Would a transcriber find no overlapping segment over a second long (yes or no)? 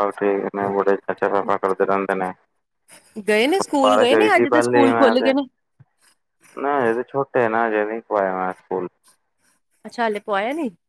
no